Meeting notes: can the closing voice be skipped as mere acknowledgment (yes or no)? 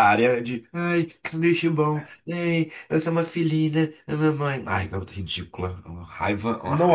no